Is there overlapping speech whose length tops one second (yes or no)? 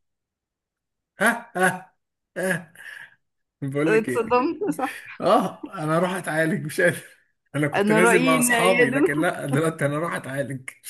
yes